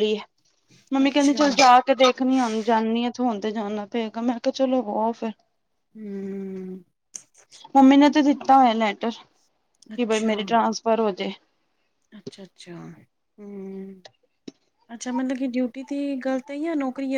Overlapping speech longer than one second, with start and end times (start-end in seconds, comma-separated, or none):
none